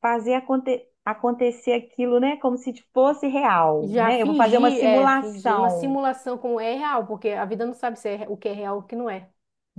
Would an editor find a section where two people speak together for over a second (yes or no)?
yes